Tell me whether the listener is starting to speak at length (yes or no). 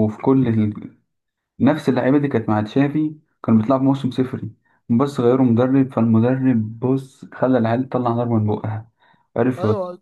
yes